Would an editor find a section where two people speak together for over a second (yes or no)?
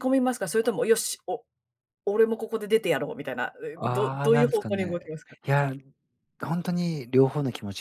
yes